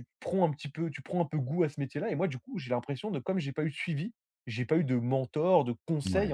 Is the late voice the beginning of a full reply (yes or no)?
no